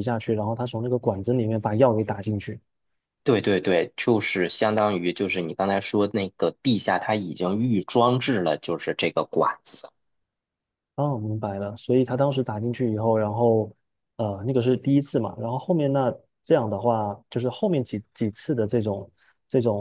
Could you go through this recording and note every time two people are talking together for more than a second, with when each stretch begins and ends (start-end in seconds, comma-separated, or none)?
none